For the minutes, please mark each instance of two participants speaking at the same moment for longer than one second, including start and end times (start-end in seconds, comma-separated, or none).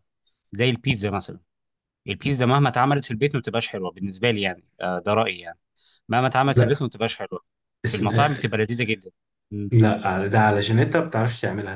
none